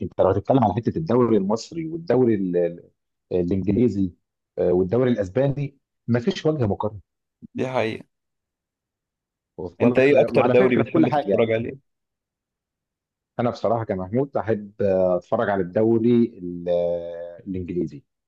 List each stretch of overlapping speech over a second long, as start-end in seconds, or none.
9.8-11.5